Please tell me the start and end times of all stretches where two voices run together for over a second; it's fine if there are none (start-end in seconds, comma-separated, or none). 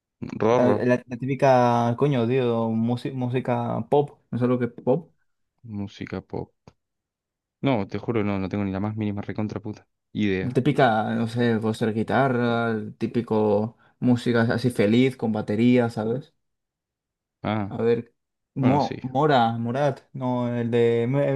none